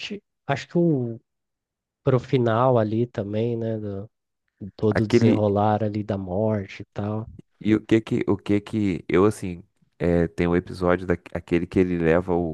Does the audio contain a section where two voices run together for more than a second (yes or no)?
no